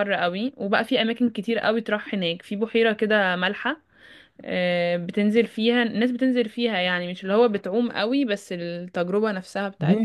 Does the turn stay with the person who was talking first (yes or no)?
no